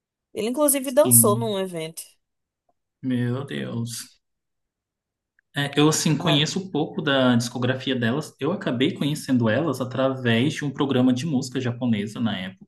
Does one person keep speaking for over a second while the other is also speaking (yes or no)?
no